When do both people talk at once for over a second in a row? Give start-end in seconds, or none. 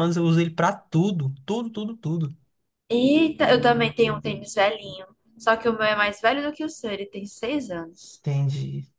none